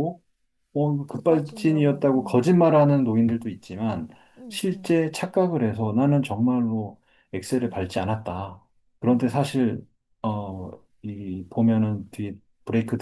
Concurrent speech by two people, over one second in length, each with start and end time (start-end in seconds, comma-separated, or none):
1.1-2.5